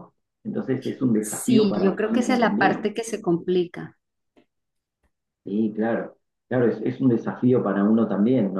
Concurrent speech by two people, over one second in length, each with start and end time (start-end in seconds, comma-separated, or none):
1.2-2.9